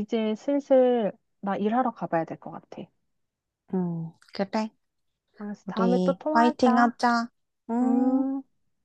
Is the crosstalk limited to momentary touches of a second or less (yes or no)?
no